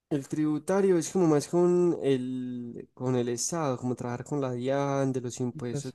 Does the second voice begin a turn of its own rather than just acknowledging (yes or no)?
no